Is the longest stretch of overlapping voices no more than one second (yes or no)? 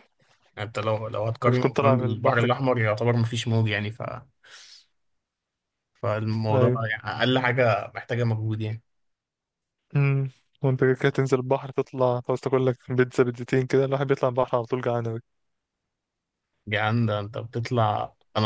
no